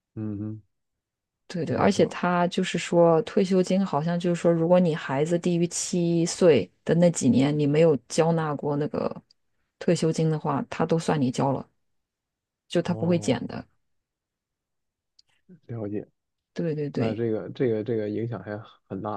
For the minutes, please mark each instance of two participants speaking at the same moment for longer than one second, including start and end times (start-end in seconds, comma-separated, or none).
none